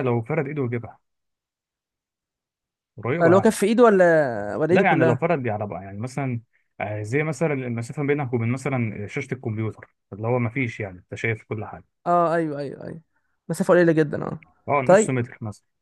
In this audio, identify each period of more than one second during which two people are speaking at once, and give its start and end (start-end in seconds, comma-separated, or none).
none